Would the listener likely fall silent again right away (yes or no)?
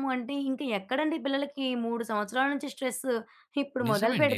yes